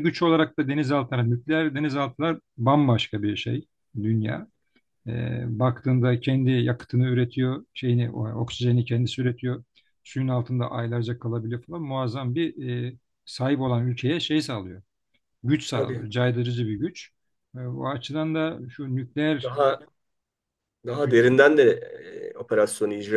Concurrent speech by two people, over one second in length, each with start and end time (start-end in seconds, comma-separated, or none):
none